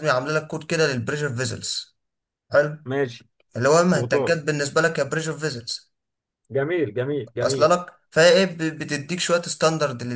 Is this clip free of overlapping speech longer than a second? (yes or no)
yes